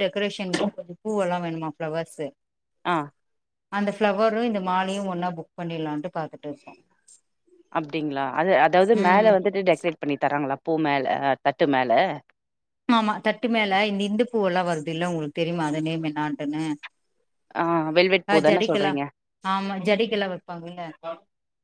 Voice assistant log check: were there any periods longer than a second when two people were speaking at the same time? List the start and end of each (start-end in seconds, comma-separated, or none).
none